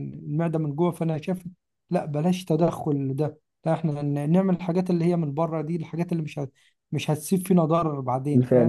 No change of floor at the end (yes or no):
no